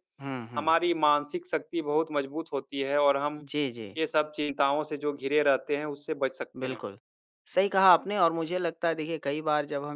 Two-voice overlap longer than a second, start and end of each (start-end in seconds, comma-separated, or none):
none